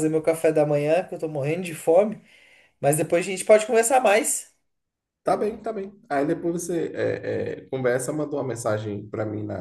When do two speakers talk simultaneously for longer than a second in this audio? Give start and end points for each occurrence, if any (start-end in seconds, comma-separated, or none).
none